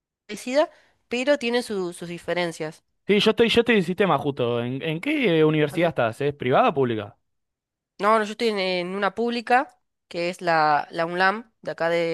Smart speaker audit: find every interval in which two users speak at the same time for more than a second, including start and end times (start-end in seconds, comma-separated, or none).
none